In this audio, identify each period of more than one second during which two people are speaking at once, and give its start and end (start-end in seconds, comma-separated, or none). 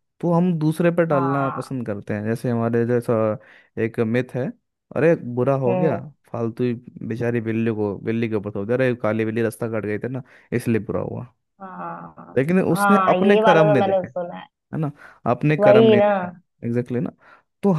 12.4-14.1